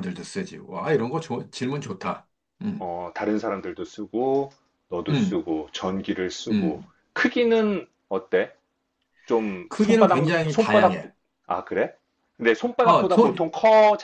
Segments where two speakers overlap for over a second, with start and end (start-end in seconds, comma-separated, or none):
9.7-11.0